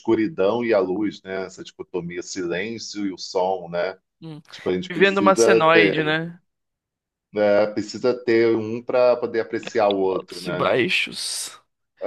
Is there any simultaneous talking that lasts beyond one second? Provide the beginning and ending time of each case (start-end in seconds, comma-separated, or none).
4.9-6.1